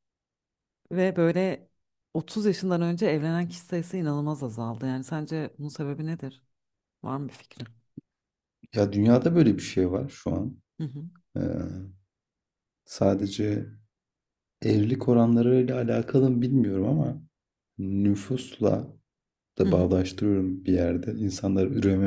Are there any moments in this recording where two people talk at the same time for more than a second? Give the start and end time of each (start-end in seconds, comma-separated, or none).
none